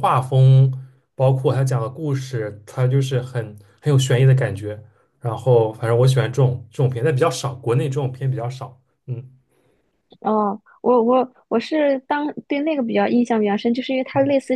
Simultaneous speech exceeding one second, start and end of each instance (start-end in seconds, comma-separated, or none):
none